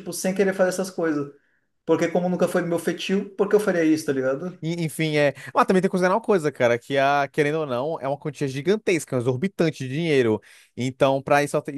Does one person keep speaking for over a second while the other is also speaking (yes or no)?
no